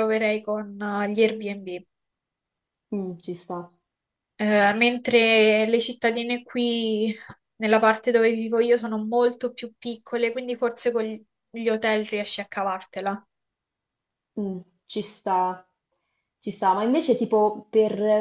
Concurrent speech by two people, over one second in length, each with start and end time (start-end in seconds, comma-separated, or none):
none